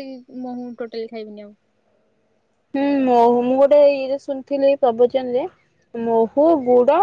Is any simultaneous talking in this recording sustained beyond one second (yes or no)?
no